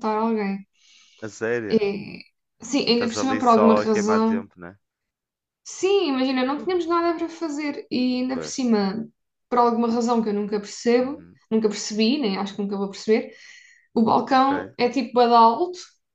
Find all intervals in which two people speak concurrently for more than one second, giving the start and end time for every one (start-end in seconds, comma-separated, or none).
2.9-4.5